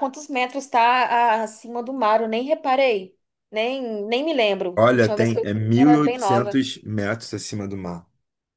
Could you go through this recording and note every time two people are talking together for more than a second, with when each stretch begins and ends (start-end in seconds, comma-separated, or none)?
4.8-6.6